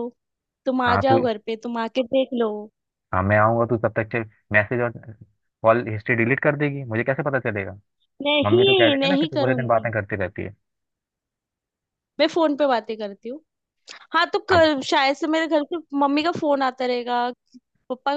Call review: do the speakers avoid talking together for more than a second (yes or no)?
no